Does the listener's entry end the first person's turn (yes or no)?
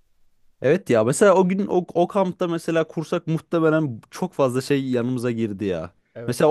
no